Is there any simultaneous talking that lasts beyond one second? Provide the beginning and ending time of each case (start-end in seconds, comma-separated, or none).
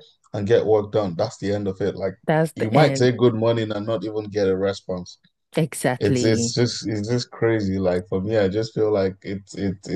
none